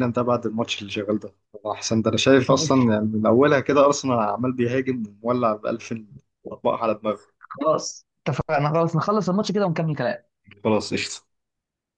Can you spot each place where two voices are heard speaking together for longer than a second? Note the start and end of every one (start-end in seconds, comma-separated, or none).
none